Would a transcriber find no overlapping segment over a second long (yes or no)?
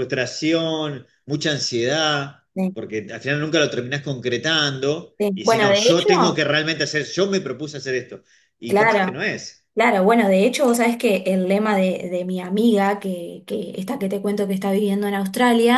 no